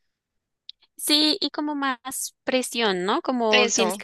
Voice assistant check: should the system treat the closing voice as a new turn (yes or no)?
no